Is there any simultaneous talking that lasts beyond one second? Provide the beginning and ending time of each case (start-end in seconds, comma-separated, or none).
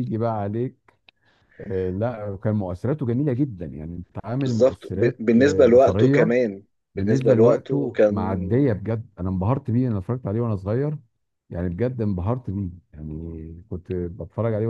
4.5-6.3, 7.0-8.3